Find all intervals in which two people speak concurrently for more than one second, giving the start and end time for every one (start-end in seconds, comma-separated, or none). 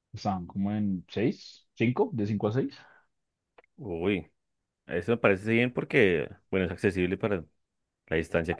none